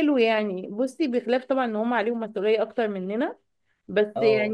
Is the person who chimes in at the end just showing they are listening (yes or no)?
yes